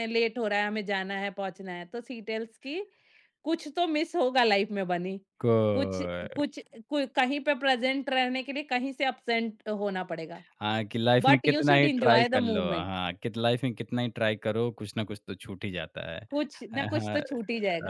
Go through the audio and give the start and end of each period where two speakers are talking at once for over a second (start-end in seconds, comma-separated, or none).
11.2-13.0